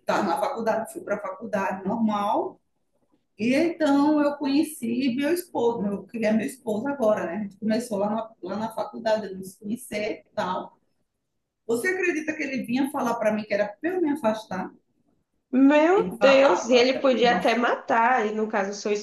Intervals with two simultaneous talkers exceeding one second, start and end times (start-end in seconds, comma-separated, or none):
15.9-17.6